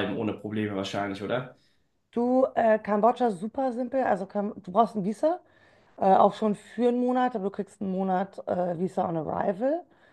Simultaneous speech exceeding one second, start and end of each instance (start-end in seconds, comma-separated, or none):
none